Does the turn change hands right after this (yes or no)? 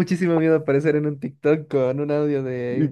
yes